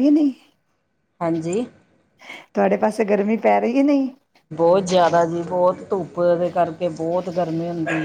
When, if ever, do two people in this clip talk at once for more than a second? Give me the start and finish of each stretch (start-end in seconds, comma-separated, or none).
none